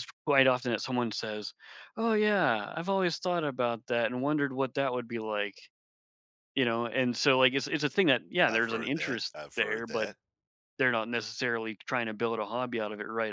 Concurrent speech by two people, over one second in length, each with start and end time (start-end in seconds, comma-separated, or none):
8.5-10.1